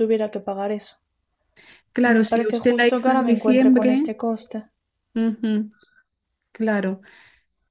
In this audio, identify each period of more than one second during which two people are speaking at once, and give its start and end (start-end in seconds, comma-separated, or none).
2.0-4.1